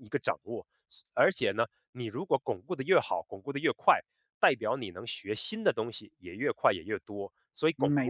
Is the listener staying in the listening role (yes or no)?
no